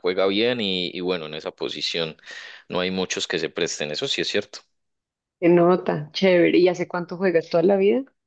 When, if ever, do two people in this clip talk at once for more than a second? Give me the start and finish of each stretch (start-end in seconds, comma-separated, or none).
none